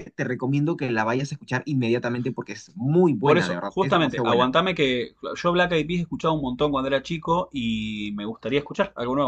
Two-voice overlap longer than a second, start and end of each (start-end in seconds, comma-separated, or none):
3.2-4.5